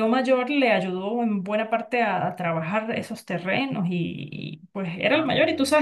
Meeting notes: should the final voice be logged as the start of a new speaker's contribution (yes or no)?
no